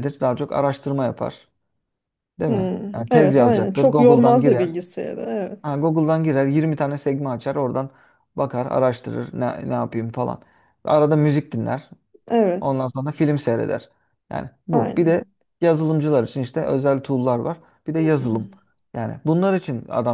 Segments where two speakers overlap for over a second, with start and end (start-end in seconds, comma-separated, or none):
2.5-4.7